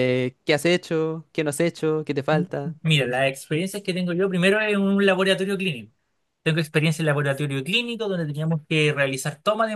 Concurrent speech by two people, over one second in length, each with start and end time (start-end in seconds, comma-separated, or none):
none